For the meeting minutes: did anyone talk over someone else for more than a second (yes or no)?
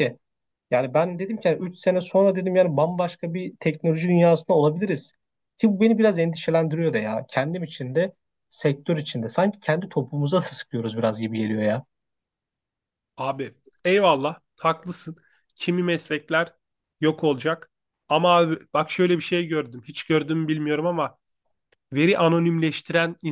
no